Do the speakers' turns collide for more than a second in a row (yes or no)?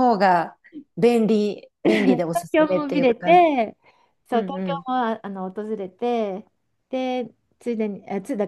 yes